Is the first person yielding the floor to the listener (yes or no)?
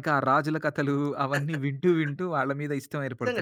yes